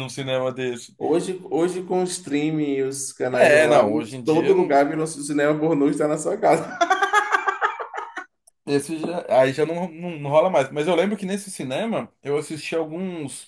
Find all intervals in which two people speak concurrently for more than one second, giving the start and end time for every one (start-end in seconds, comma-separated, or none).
3.3-4.8